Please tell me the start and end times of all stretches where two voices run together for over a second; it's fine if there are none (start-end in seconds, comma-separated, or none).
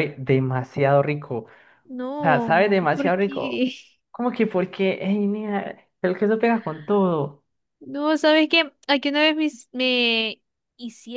2.2-3.6